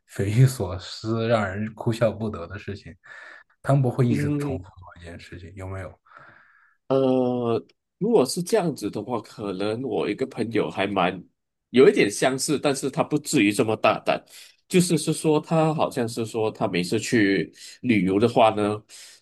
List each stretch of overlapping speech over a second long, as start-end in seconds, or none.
none